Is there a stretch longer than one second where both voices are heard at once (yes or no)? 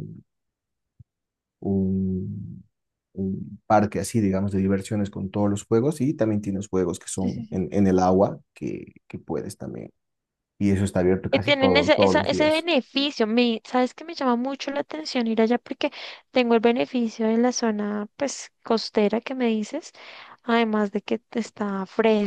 yes